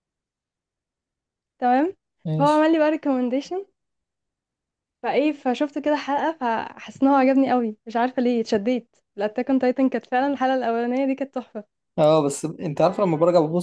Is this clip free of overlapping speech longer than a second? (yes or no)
yes